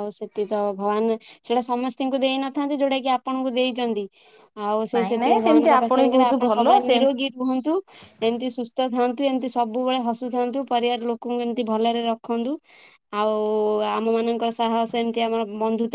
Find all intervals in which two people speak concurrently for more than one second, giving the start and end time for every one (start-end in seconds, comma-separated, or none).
5.0-7.1